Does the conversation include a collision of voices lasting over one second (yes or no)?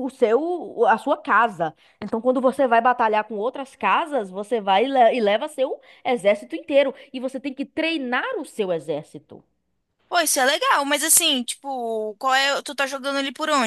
no